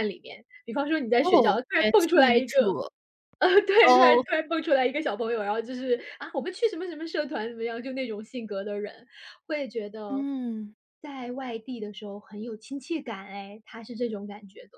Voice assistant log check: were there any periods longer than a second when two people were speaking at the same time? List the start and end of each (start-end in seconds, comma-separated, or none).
1.2-2.8